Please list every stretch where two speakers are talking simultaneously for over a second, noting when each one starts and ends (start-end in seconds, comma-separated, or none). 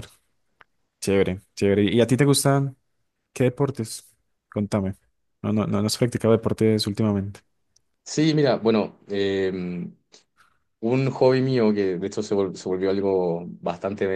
none